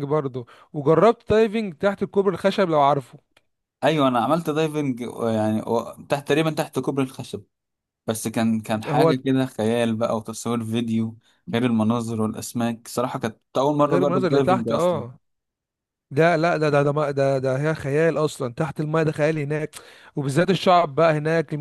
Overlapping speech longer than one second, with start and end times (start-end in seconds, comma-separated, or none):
13.8-15.0